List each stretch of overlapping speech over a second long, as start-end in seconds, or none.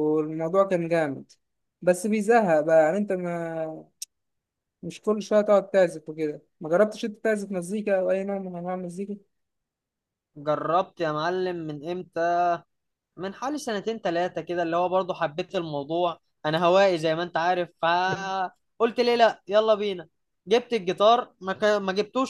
none